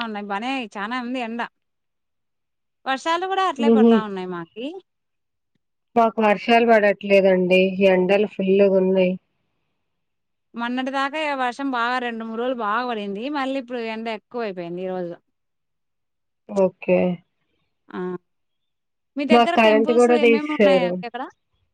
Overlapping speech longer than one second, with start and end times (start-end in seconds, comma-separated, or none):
19.3-20.9